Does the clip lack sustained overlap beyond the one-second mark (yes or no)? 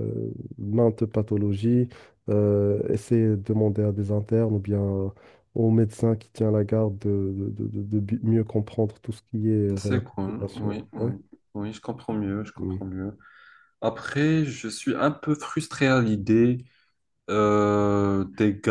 no